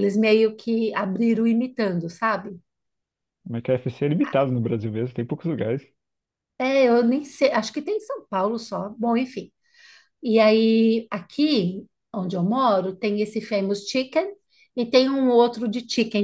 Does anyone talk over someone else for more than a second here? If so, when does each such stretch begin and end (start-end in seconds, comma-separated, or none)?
none